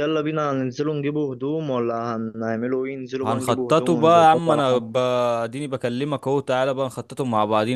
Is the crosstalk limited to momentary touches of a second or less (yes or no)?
no